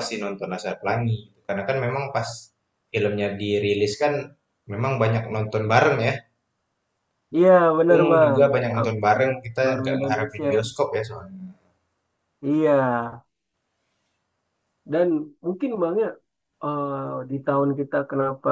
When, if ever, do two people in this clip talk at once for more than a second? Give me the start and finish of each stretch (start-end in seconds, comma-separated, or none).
7.9-10.5